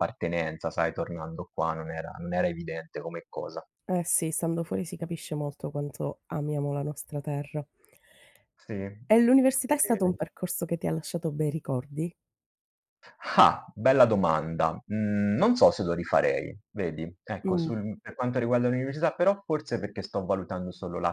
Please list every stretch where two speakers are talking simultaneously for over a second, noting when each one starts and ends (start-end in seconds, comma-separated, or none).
none